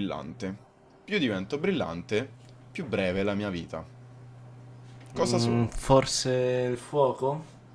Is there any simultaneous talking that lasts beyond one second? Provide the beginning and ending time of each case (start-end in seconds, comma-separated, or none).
none